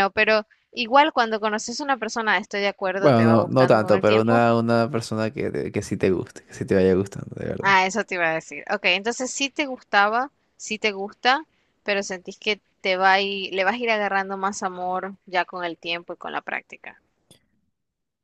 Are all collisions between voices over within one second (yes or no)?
no